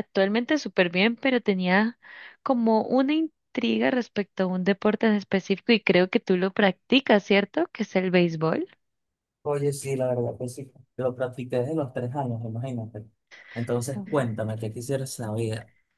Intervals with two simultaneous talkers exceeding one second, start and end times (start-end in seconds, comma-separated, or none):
none